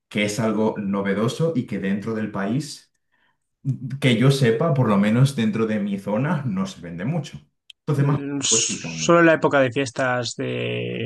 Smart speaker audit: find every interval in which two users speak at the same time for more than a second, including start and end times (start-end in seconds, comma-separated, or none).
7.9-9.1